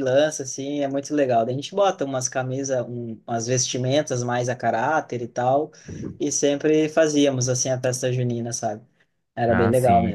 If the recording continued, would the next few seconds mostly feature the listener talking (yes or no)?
yes